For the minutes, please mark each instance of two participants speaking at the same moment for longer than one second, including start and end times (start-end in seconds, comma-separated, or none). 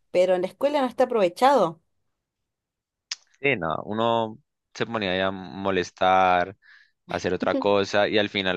none